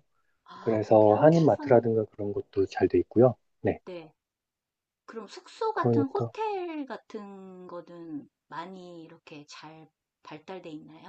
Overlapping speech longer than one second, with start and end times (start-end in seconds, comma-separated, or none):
0.6-1.8